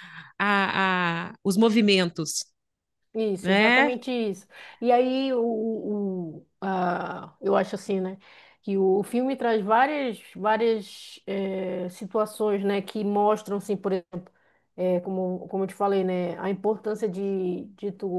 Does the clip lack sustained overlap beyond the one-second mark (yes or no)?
yes